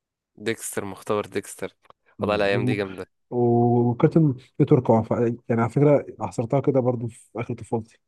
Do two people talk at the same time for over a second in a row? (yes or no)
no